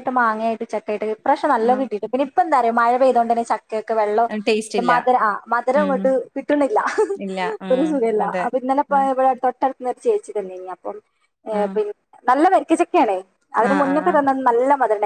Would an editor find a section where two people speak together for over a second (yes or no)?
no